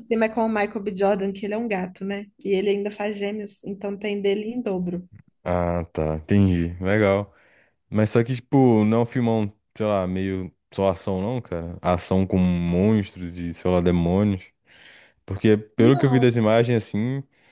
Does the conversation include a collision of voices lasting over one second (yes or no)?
no